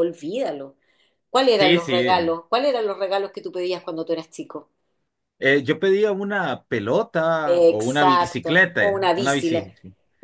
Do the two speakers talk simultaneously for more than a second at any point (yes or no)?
yes